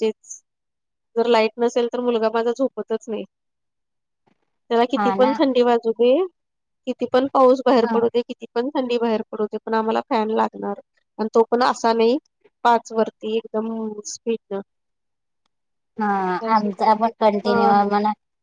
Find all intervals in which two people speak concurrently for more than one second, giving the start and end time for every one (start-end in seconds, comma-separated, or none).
16.5-17.9